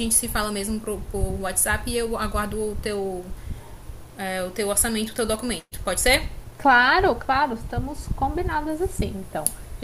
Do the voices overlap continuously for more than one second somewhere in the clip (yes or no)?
no